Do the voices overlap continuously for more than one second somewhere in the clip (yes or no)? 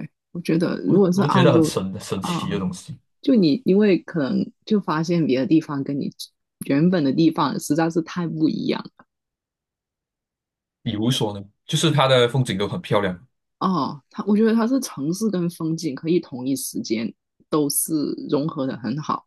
yes